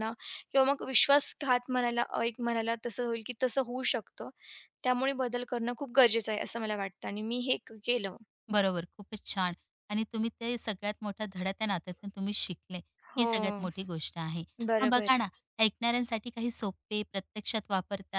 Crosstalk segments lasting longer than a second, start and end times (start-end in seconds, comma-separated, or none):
none